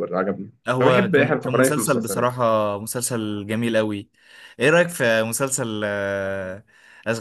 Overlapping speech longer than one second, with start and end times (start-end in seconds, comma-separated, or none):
0.7-2.3